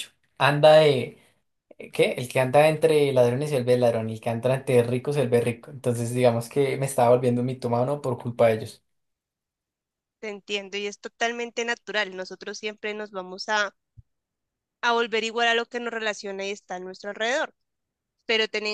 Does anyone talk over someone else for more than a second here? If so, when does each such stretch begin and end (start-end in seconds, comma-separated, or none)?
none